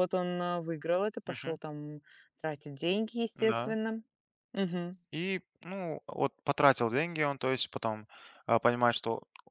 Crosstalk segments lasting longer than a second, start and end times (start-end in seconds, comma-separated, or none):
none